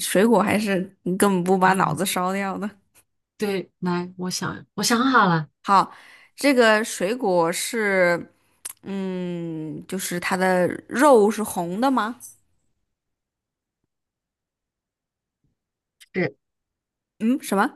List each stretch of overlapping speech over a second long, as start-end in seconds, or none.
none